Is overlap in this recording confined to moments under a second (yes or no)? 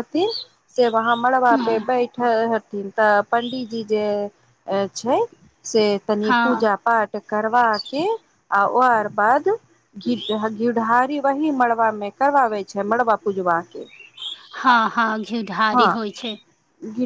yes